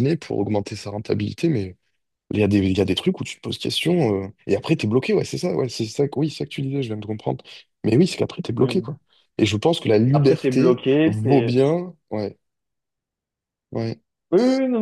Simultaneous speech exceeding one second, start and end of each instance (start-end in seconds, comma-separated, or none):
10.1-11.6